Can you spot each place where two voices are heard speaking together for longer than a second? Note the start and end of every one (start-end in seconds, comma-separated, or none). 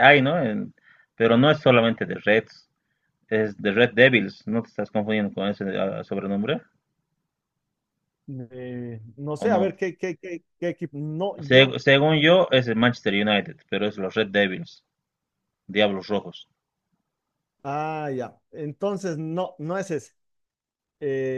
none